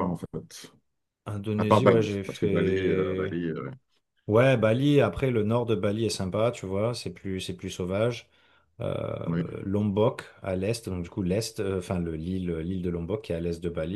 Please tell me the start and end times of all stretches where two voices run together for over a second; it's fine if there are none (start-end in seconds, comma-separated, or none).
1.6-3.4